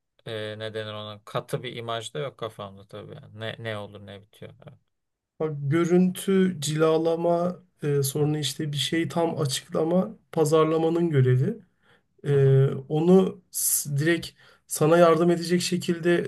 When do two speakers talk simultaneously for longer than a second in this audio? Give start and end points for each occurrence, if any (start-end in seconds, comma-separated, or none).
none